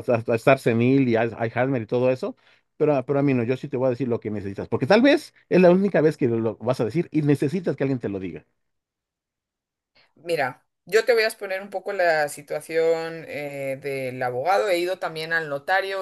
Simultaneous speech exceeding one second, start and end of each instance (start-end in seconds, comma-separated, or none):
none